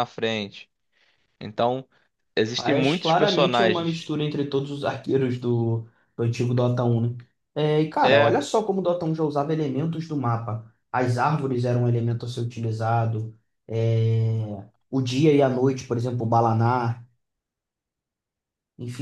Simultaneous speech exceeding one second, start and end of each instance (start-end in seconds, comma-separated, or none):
2.5-4.0